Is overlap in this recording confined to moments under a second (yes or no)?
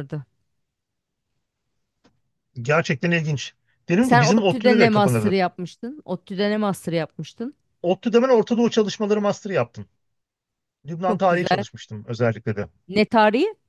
no